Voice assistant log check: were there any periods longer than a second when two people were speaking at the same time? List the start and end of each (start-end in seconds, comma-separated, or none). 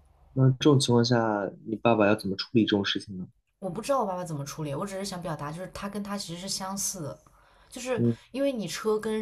none